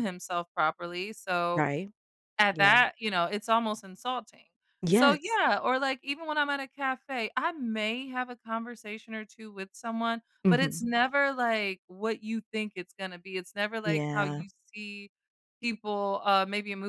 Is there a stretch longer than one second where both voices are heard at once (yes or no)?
no